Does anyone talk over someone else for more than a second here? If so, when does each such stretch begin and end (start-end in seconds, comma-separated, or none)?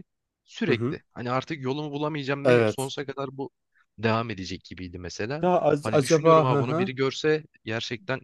5.4-6.9